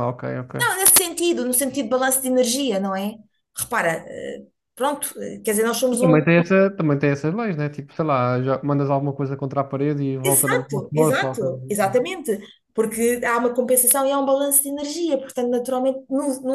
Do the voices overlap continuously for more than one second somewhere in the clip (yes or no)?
yes